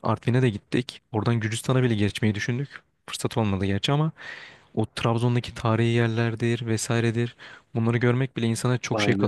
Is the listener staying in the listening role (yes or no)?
yes